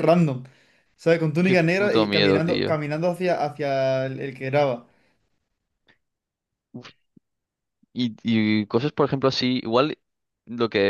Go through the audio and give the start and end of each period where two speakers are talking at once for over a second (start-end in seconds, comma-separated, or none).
1.4-2.8